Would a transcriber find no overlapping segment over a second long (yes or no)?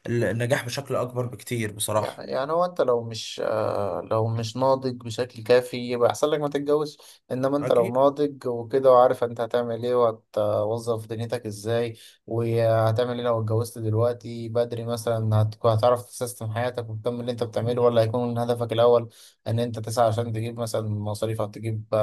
yes